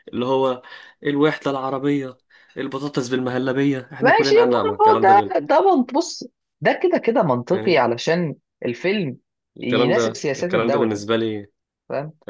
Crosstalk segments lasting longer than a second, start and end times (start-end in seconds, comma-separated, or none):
4.0-5.3, 9.6-11.0